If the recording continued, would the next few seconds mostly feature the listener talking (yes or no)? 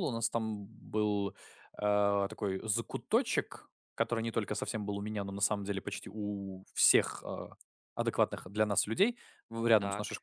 no